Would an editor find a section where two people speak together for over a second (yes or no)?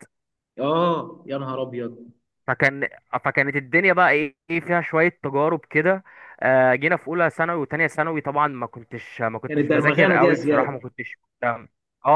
yes